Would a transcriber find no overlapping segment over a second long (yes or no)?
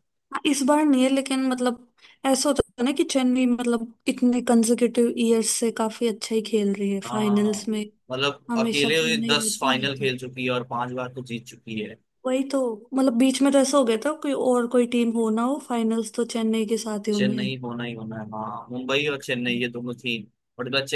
no